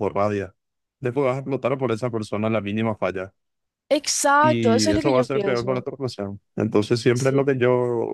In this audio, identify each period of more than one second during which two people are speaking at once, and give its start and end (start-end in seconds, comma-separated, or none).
4.4-5.8